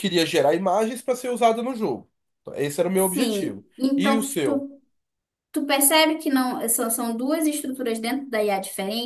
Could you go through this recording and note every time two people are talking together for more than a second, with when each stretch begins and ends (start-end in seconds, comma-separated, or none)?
2.9-4.7